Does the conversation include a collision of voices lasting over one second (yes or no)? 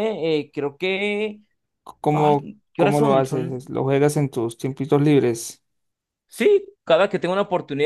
yes